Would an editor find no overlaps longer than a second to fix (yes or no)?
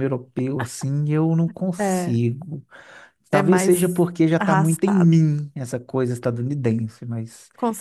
no